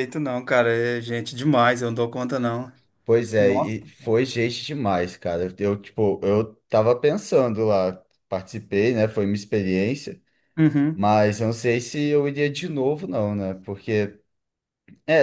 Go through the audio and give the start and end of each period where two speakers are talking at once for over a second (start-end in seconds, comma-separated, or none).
none